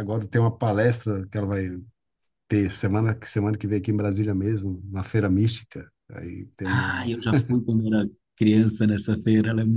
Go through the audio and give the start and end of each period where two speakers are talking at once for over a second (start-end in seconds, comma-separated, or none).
none